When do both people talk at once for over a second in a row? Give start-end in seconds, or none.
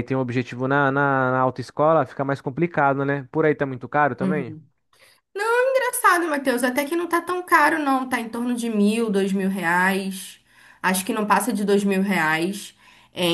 none